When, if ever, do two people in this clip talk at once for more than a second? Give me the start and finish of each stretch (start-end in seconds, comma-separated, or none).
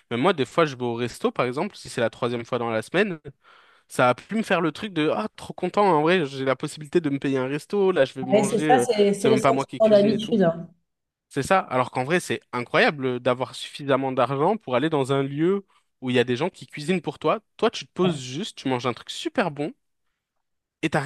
8.3-10.4